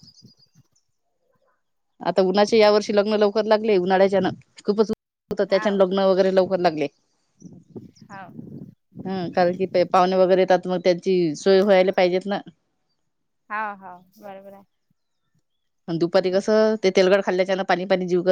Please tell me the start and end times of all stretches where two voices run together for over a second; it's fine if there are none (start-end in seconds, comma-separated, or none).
none